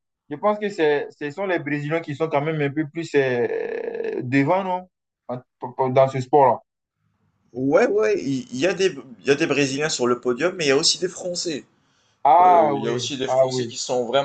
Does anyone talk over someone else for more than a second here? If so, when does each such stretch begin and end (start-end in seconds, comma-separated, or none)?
12.4-13.7